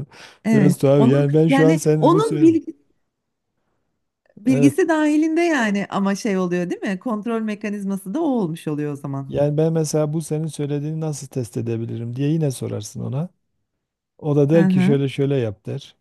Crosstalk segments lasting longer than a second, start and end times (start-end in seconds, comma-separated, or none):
0.5-2.5